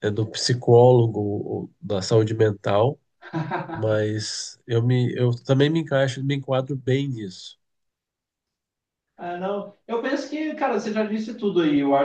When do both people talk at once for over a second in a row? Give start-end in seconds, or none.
none